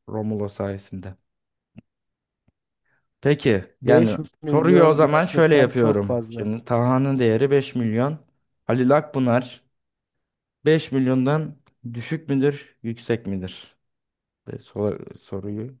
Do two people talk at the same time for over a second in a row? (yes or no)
yes